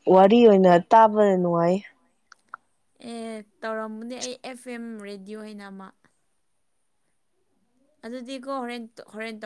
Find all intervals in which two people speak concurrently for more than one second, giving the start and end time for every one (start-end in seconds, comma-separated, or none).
none